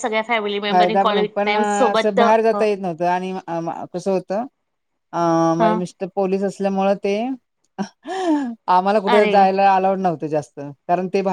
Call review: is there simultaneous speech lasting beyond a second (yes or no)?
yes